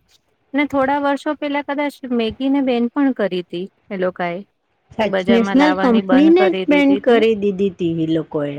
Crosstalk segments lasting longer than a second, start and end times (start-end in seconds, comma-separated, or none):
5.0-7.2